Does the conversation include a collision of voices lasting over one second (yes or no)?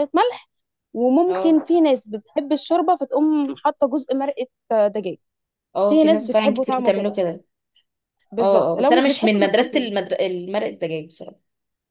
yes